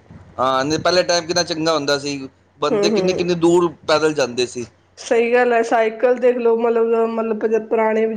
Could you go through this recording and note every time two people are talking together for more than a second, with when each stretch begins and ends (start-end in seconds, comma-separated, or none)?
none